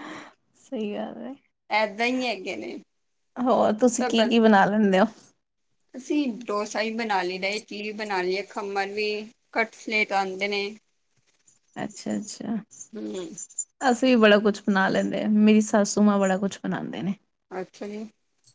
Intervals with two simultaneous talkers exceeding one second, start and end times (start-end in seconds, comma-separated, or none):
none